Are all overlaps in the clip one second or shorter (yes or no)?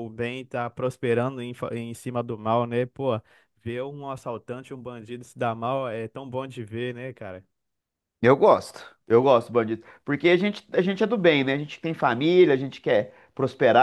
yes